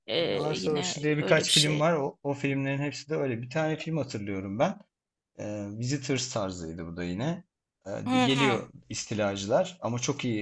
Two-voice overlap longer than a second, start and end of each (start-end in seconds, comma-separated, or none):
0.6-1.8